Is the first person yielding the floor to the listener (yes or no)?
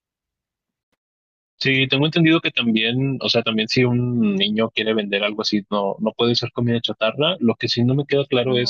no